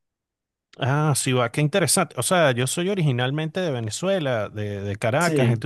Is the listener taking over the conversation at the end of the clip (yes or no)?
no